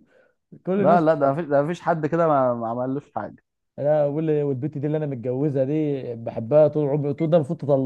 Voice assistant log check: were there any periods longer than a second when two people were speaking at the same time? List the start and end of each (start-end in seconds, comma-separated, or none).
none